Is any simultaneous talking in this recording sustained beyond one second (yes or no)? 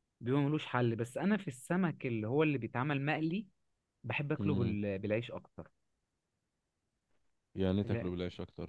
no